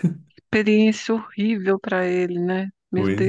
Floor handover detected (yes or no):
yes